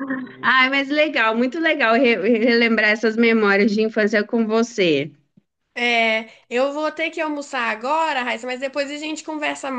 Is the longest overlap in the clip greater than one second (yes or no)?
no